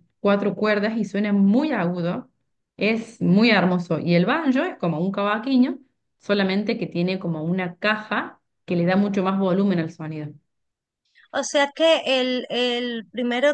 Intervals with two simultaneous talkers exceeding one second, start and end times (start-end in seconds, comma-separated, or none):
none